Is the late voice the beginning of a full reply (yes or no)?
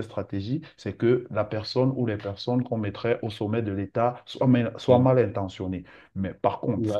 no